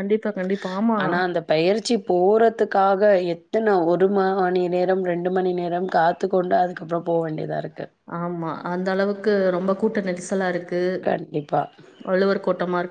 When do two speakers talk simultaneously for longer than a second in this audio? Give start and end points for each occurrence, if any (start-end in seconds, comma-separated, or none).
none